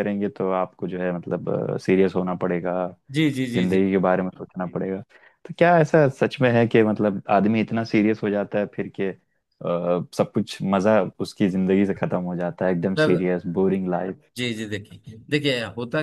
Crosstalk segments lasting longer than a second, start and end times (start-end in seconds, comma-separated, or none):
none